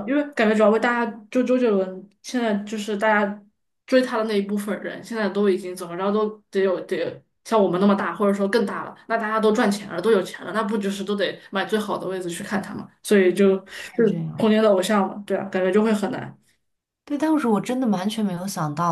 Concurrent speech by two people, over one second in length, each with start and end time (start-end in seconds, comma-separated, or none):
none